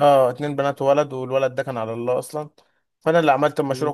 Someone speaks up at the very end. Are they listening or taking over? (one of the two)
listening